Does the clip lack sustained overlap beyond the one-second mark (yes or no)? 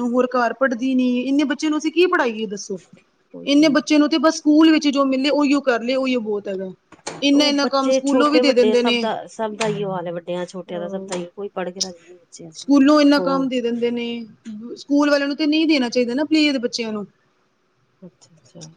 no